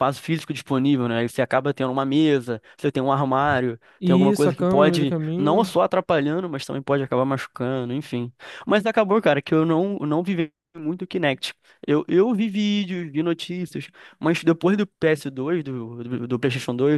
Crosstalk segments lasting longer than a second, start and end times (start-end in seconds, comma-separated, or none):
4.0-5.7